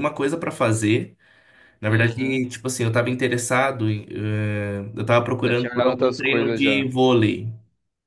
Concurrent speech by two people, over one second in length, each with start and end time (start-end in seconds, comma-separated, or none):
5.4-6.9